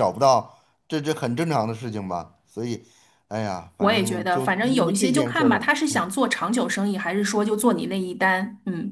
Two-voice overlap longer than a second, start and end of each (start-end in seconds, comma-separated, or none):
3.8-5.7